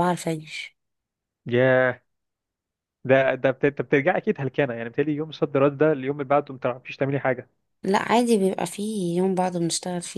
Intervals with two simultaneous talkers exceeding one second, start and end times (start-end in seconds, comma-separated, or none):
none